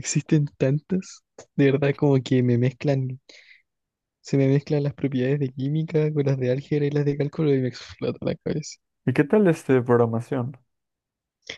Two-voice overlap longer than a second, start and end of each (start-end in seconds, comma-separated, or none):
none